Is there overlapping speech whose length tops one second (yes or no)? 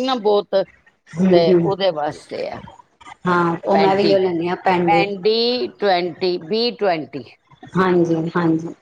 no